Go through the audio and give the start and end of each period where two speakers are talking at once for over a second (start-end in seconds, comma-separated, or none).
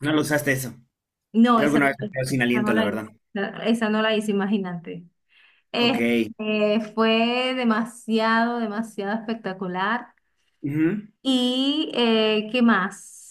none